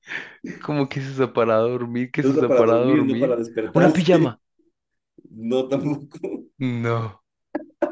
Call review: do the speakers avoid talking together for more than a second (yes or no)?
no